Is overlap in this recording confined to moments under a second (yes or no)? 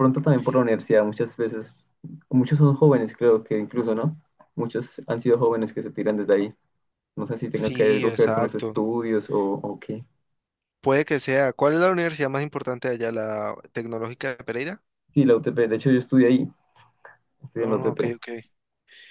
no